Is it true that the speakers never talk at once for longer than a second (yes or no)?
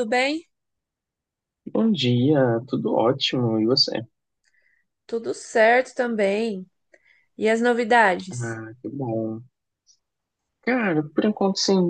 yes